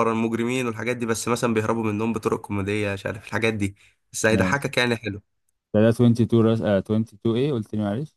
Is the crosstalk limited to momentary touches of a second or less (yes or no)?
yes